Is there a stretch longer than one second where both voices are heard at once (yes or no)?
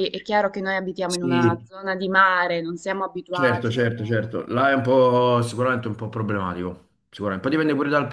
no